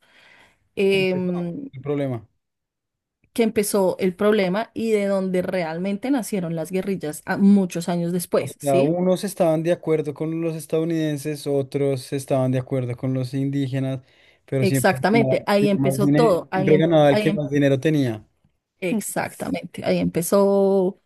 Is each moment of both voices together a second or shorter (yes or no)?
no